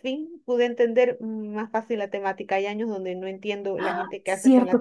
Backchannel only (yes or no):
no